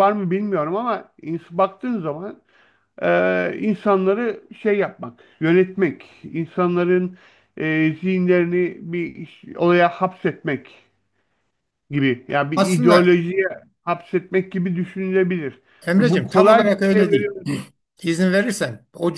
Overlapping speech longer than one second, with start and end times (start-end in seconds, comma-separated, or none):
16.0-17.3